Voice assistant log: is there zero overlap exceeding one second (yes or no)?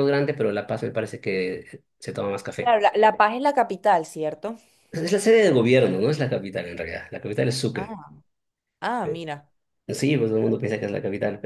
yes